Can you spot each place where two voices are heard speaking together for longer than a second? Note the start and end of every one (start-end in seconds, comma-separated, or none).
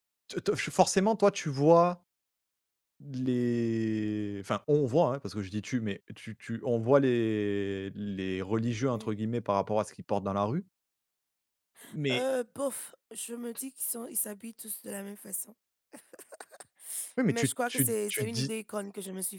17.3-18.5